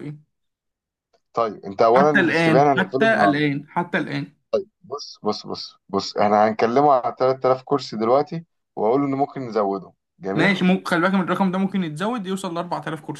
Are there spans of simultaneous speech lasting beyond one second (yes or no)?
yes